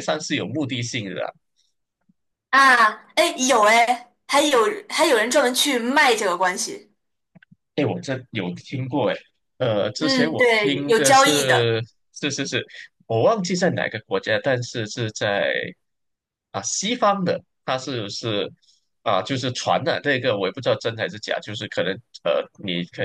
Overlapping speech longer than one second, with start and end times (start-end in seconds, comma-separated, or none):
10.0-11.7